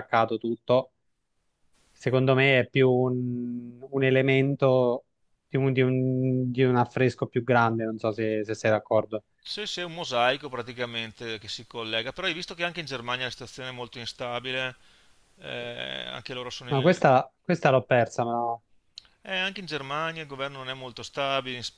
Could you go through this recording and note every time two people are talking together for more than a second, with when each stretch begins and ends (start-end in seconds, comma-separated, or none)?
none